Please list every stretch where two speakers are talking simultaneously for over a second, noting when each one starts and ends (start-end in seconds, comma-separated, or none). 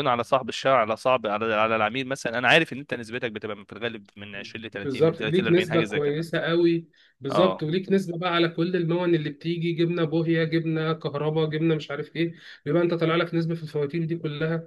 4.8-6.3